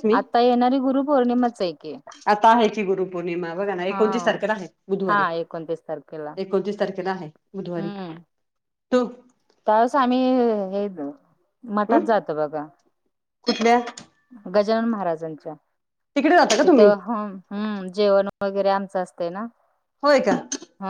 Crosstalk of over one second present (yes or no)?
no